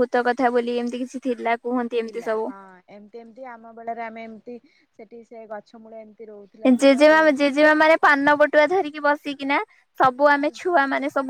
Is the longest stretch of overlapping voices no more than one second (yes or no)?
yes